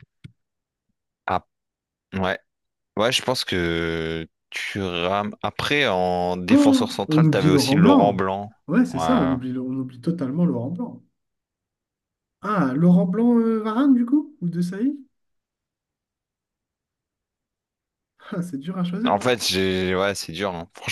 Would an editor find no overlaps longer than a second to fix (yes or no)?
no